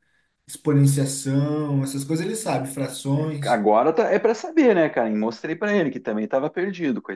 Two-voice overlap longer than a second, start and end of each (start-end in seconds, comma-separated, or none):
none